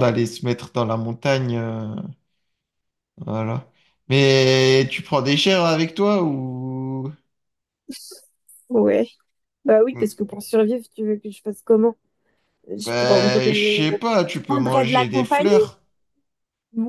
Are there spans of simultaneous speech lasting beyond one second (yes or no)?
yes